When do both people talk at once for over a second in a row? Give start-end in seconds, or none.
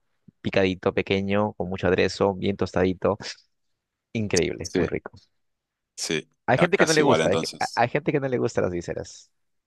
6.5-7.8